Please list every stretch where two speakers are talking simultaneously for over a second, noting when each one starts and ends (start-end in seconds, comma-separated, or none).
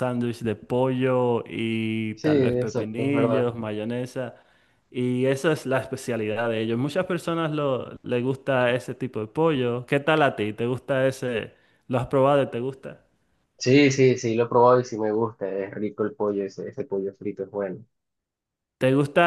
2.1-3.5